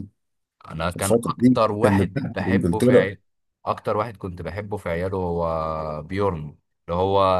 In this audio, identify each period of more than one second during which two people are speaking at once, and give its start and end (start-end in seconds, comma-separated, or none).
0.9-3.1